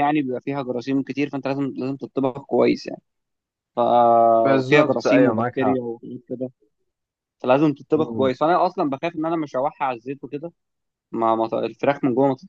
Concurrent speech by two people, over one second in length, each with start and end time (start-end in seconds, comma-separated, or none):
4.4-5.8